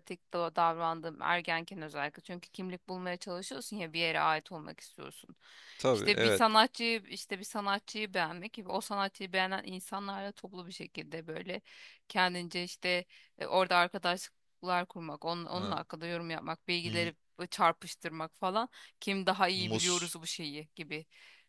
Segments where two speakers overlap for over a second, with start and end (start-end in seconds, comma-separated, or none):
none